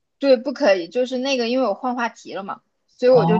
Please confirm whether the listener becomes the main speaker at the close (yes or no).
no